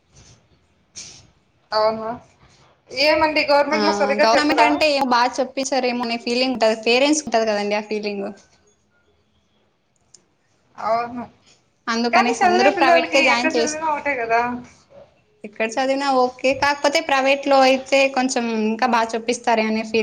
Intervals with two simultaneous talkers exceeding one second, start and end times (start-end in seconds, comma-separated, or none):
12.1-13.8